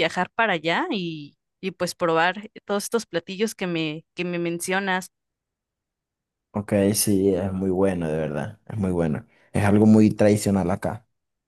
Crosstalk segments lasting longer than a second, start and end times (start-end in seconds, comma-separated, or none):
none